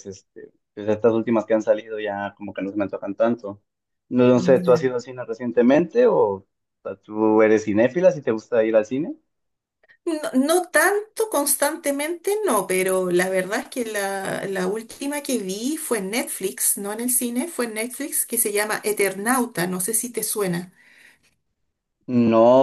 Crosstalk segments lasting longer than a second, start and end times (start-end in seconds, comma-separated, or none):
none